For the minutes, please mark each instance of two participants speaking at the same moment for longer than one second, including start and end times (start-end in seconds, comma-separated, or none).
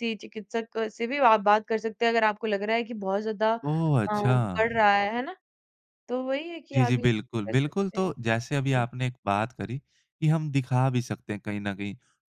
6.7-8.1